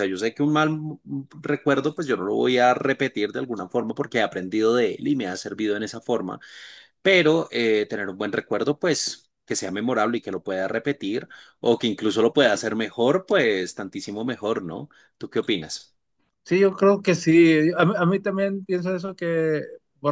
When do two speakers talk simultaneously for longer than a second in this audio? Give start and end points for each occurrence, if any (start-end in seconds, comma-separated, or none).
none